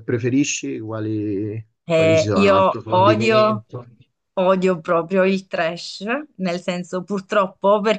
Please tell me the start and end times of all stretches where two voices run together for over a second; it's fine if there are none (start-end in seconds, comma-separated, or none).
1.9-3.6